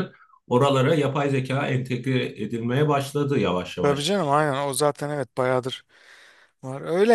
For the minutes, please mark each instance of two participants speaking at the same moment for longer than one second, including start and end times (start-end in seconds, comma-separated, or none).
none